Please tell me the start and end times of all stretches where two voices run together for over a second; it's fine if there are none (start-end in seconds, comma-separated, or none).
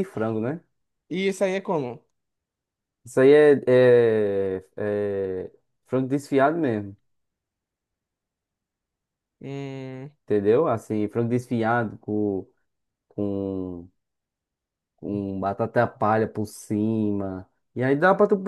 none